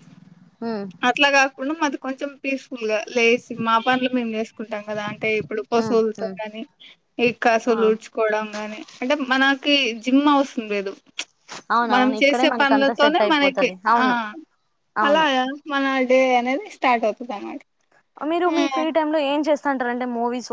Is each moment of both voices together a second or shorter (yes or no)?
no